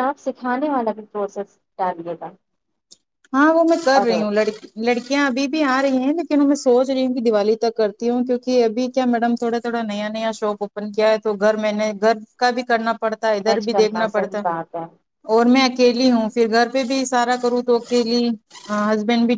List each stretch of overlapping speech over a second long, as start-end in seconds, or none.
13.2-14.6